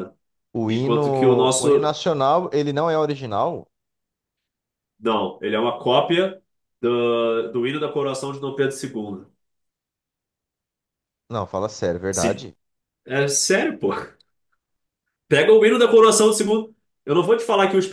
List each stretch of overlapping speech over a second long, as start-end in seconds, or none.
0.7-1.9